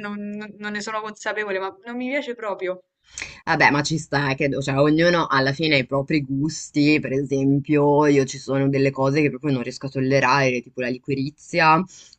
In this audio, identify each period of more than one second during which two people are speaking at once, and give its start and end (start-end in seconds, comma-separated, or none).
none